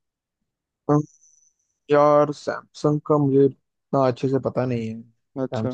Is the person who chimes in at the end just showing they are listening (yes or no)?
no